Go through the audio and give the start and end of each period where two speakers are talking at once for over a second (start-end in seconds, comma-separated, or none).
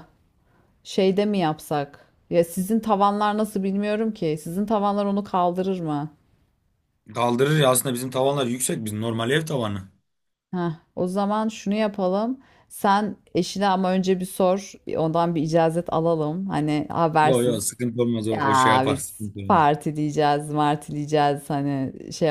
18.3-19.6